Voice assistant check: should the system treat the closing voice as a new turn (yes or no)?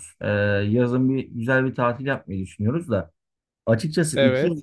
no